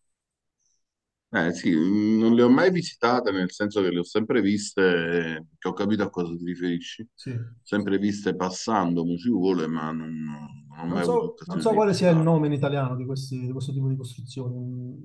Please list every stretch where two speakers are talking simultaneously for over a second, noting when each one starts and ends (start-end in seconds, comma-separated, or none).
10.9-12.3